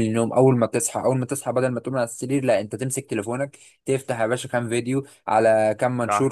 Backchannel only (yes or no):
yes